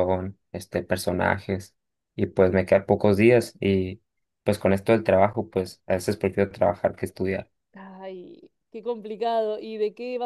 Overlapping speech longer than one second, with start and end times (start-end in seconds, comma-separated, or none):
none